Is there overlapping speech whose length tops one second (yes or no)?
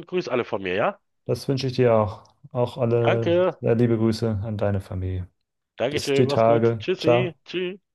yes